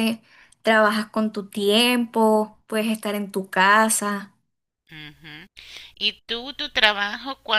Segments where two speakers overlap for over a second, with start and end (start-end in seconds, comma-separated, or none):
none